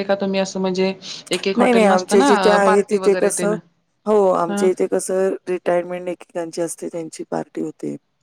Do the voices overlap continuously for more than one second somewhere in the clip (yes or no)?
yes